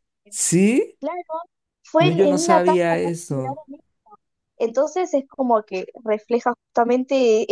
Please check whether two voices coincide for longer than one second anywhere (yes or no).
yes